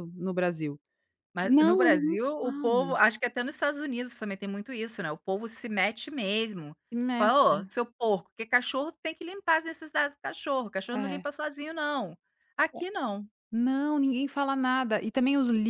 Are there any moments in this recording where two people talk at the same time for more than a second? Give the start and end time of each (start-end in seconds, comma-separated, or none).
1.4-3.0